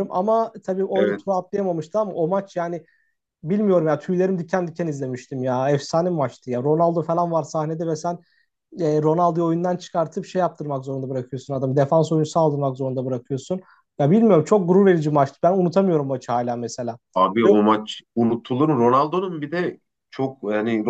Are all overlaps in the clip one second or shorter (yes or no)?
yes